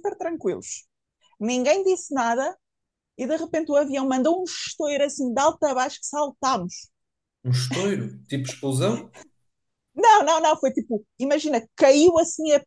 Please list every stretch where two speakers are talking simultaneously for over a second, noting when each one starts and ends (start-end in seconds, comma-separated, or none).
none